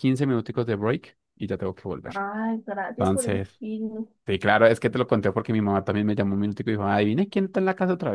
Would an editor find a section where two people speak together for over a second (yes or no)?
no